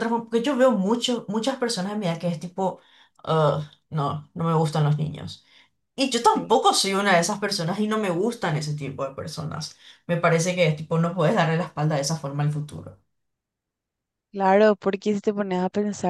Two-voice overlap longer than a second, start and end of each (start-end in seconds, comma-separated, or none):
none